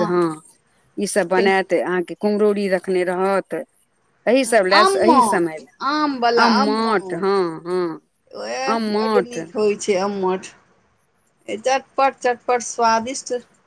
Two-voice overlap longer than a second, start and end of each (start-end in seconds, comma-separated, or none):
4.4-7.4